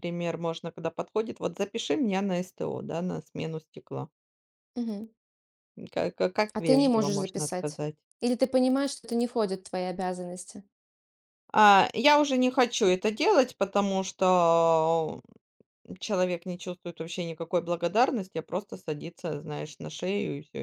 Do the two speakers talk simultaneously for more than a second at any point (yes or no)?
yes